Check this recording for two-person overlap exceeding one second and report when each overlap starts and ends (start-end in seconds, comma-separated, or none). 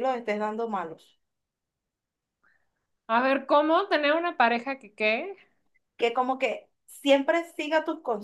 none